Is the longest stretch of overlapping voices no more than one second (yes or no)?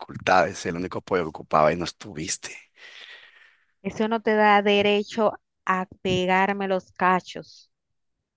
yes